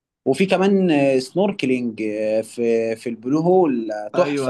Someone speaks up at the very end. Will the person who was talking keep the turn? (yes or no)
no